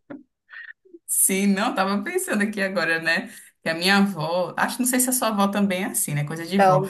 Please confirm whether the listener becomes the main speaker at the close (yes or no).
no